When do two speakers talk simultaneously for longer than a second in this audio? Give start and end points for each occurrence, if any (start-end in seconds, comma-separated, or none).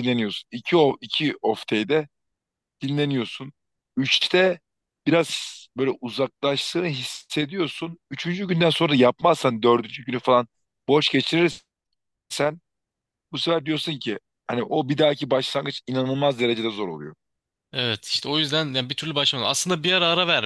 none